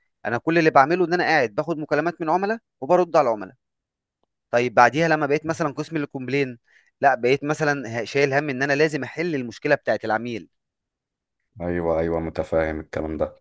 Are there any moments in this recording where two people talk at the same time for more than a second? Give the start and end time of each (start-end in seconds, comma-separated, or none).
none